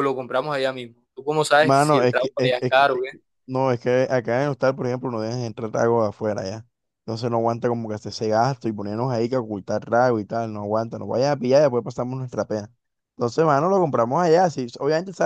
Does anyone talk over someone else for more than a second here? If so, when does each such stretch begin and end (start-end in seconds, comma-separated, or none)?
1.6-3.1